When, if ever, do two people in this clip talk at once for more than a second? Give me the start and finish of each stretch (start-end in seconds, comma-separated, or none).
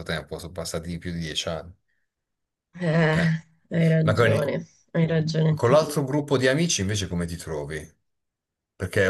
none